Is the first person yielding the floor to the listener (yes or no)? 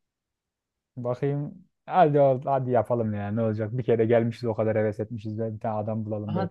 yes